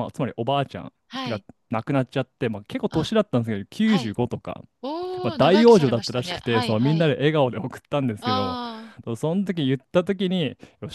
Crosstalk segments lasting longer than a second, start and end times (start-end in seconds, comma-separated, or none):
5.2-7.2